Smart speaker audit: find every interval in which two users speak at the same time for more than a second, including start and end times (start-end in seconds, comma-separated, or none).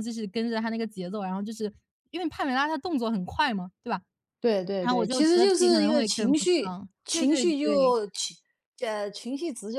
4.8-7.9